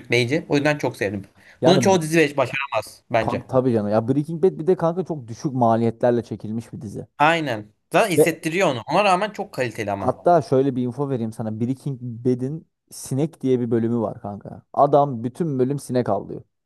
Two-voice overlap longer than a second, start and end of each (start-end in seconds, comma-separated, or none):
none